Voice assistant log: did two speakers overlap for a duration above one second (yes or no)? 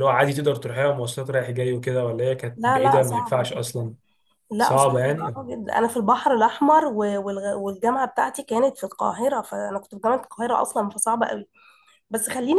yes